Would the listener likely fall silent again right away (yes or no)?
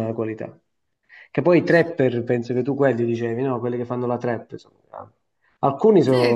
yes